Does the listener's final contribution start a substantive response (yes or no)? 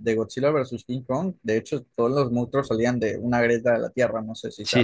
yes